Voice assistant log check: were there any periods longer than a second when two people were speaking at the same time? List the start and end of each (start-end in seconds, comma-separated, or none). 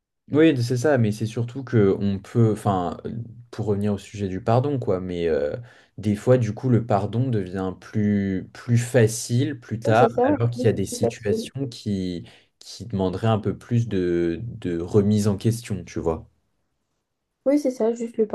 9.8-11.5